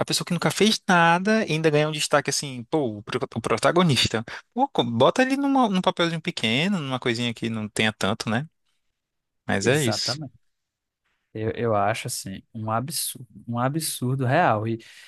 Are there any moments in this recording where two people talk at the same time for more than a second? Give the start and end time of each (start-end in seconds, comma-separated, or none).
none